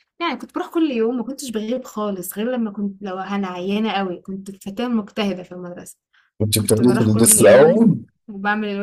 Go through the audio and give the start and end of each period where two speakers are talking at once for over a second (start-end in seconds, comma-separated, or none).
6.6-7.9